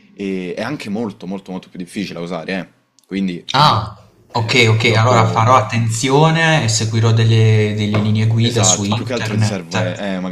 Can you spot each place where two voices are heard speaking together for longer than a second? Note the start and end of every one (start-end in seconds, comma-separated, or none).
4.3-5.7, 8.4-9.6